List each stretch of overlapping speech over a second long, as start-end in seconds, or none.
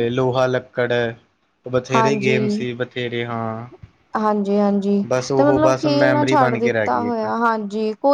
5.1-7.2